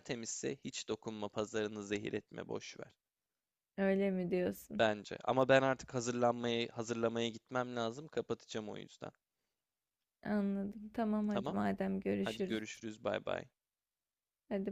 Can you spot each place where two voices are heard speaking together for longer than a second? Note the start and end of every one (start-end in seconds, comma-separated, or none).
none